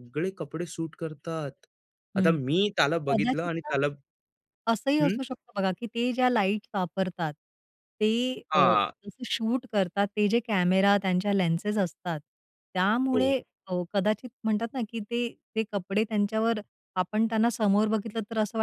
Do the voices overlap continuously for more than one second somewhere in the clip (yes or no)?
no